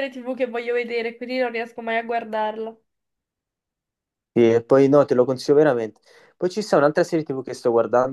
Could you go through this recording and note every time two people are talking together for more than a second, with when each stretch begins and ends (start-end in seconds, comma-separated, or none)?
none